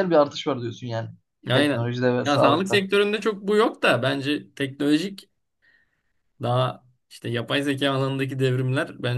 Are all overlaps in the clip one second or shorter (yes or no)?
no